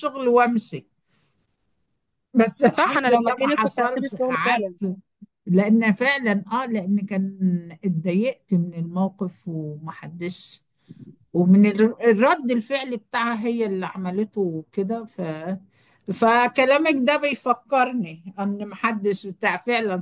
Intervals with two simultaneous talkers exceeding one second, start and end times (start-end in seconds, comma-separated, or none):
2.8-4.8